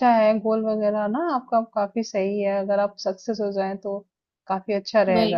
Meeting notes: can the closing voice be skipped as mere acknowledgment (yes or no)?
no